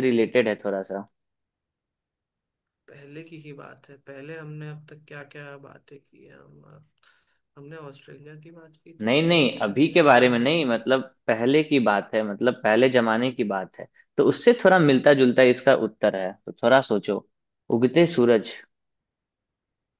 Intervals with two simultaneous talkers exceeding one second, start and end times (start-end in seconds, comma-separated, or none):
9.0-10.8